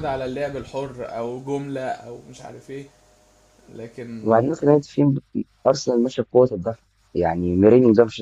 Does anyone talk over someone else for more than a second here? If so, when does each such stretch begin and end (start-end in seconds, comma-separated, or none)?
none